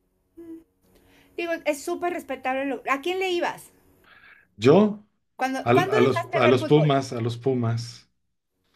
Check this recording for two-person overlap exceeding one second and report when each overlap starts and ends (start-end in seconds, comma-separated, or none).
5.6-6.9